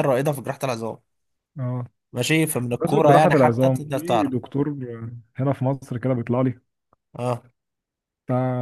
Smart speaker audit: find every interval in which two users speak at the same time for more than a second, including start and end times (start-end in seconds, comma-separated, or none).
2.8-4.3